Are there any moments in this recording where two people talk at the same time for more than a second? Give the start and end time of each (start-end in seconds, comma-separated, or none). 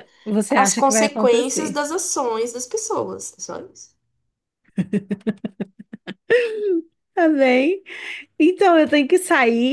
0.6-1.8